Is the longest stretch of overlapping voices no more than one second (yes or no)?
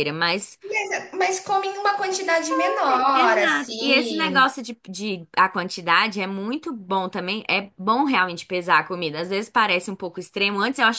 no